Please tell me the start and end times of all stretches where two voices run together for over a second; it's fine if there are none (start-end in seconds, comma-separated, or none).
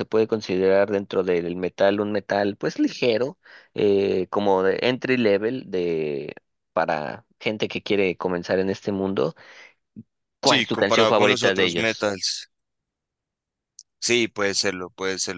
10.4-12.1